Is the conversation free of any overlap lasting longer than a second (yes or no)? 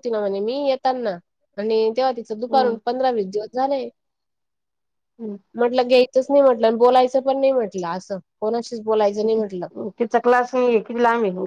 yes